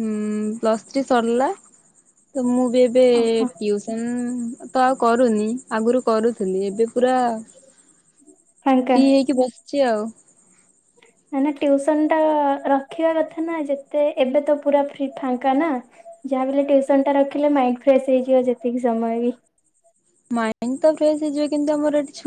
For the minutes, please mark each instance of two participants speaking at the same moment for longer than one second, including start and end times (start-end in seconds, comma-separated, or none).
none